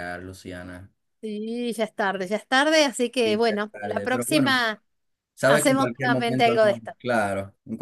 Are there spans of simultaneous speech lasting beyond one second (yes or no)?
yes